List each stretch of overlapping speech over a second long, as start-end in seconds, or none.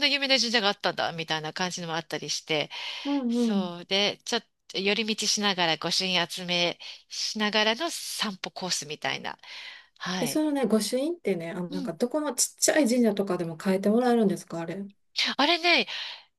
none